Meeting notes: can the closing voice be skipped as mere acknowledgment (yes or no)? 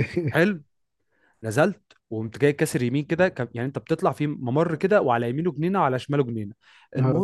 yes